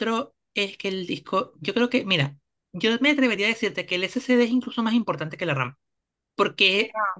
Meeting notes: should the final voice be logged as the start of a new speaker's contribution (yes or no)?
no